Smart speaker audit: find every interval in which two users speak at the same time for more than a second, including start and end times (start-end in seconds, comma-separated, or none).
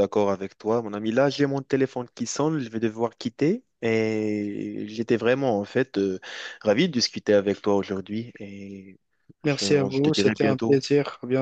9.4-10.8